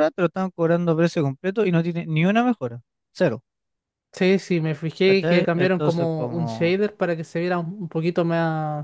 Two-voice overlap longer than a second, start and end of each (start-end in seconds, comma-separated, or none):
5.0-6.8